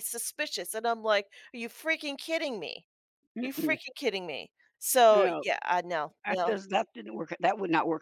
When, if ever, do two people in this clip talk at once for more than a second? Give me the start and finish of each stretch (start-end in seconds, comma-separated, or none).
none